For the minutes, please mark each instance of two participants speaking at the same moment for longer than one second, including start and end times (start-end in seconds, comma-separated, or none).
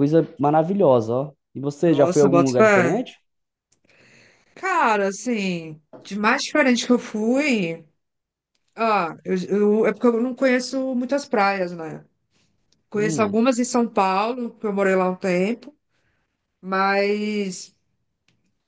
1.8-3.1